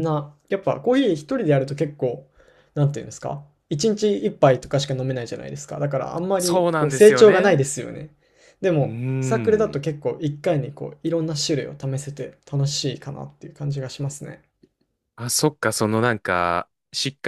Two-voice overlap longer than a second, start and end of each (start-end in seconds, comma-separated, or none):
6.4-7.6